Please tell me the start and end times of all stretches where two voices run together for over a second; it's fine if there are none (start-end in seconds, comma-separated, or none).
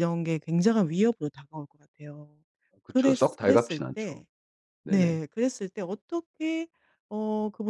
2.9-4.2